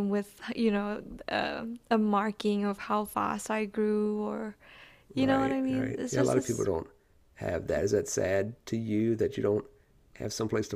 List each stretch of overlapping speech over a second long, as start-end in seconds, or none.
5.2-6.7